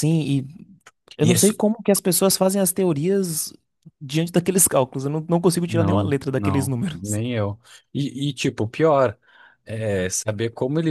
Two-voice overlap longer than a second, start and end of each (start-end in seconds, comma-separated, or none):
5.7-7.2